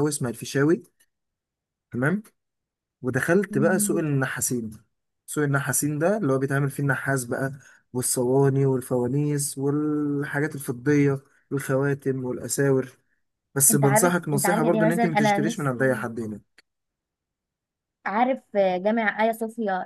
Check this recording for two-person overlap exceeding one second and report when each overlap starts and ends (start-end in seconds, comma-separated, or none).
13.7-16.1